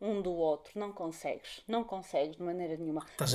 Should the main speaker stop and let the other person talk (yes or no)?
yes